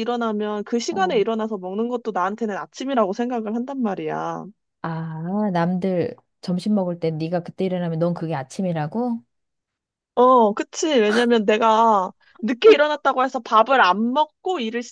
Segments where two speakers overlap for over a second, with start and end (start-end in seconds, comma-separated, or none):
none